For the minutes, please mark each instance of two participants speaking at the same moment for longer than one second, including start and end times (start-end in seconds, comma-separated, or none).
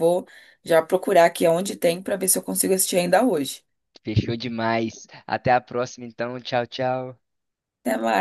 none